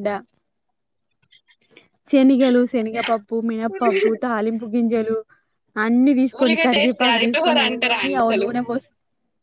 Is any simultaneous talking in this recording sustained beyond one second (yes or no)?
yes